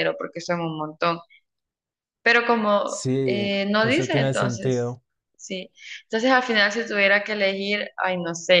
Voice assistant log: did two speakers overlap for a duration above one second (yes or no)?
yes